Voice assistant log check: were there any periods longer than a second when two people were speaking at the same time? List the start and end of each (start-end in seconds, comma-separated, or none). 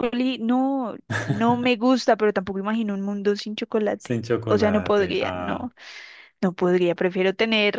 4.0-5.7